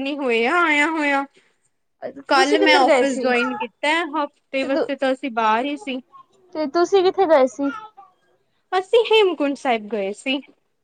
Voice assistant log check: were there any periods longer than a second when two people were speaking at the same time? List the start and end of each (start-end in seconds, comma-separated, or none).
2.4-3.6